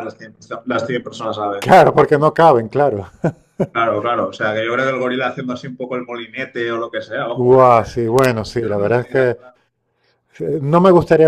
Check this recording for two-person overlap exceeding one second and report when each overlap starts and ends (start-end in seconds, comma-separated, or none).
7.3-9.4